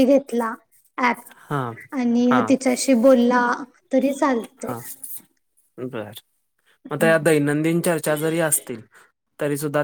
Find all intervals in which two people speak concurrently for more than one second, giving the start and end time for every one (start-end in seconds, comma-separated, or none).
none